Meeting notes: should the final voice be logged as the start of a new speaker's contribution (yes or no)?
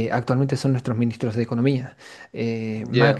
no